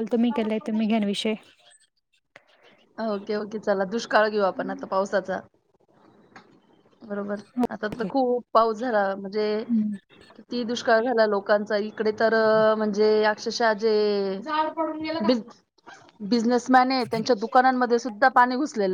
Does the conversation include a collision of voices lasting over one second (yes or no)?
no